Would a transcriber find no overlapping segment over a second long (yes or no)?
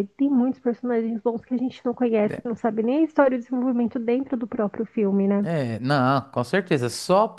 yes